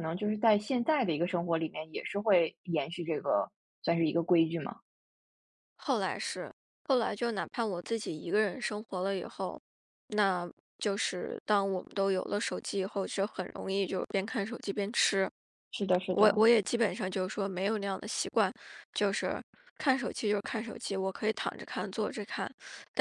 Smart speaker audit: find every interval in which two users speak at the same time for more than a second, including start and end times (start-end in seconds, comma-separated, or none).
none